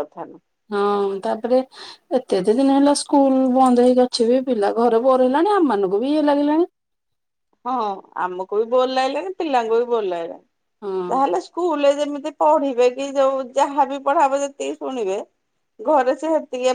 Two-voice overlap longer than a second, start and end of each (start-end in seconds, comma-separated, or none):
none